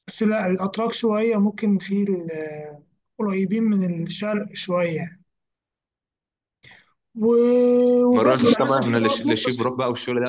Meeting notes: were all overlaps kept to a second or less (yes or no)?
no